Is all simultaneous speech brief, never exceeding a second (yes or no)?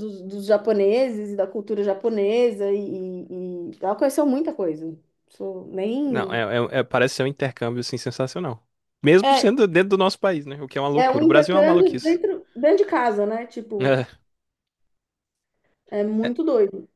no